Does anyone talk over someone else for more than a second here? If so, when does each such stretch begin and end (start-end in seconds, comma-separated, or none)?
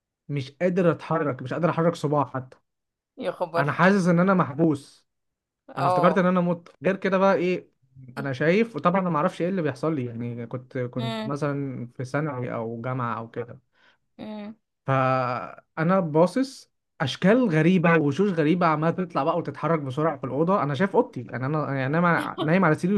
none